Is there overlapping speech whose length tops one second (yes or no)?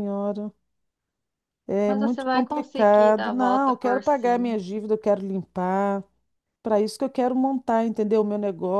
yes